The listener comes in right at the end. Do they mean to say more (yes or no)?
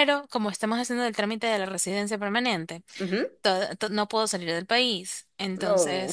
no